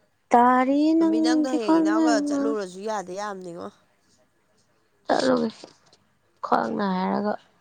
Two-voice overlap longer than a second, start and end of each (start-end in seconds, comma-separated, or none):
0.9-2.4